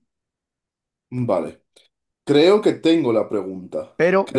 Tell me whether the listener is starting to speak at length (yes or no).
yes